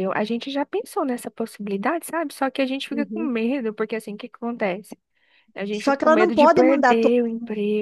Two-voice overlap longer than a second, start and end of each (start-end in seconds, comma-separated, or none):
5.7-7.2